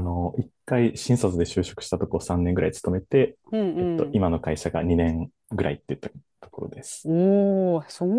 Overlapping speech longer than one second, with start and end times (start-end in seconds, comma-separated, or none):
none